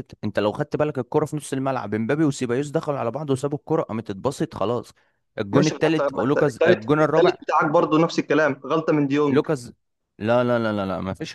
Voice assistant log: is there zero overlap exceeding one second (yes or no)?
no